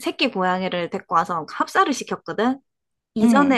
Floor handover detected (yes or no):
no